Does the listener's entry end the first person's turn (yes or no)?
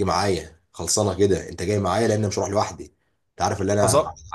no